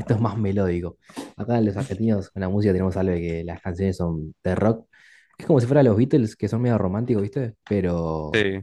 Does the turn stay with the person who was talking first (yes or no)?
yes